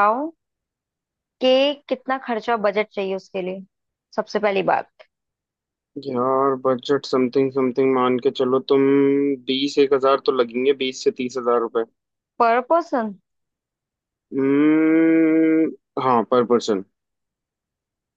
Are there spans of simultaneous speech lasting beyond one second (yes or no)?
no